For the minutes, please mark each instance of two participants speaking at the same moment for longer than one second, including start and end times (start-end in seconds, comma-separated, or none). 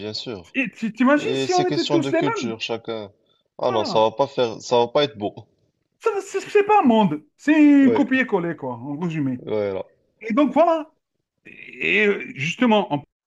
1.1-2.6